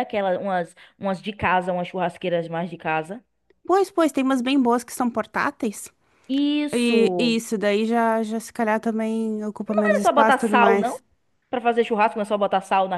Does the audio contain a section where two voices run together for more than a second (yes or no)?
yes